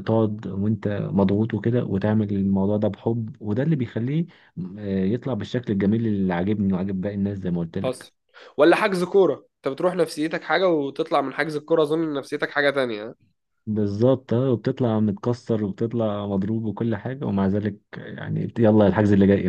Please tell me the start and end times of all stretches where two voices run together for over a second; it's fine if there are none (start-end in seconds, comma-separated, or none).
none